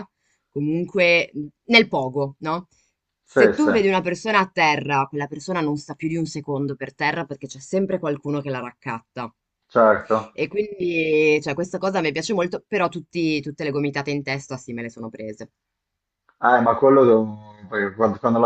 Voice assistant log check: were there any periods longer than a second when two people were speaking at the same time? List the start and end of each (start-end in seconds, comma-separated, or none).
none